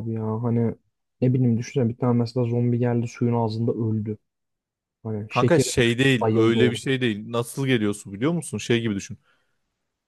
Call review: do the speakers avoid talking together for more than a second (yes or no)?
no